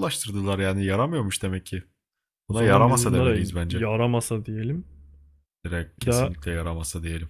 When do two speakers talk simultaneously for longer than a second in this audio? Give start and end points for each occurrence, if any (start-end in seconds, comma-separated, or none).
2.5-3.8